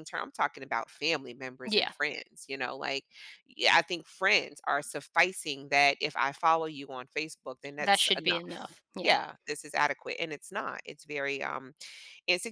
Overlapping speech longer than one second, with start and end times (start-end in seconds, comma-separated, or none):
7.8-9.1